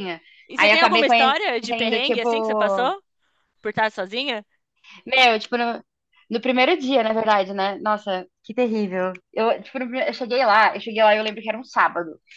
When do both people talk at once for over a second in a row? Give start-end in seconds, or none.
0.6-2.9